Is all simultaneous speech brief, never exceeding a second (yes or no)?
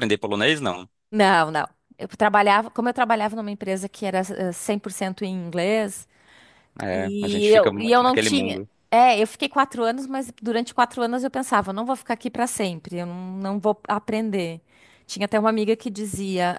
no